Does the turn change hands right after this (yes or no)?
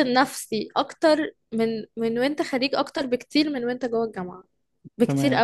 yes